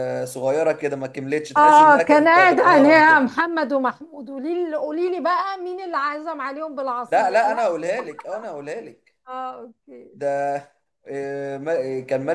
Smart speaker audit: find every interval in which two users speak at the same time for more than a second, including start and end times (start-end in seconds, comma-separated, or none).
1.6-3.3